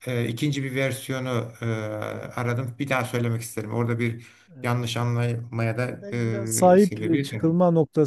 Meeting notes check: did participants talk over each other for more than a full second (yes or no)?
yes